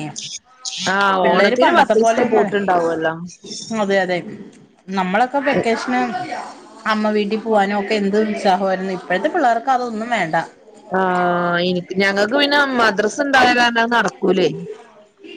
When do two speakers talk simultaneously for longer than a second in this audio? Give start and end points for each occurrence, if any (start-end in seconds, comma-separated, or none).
1.2-2.8